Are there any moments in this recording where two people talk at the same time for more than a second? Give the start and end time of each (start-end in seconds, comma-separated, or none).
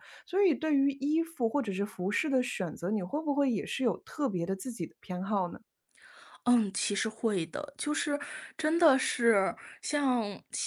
none